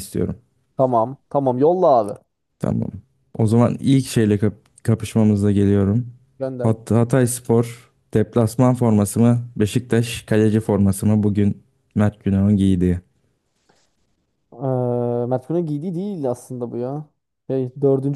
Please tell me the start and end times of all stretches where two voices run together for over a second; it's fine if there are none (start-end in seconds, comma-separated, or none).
none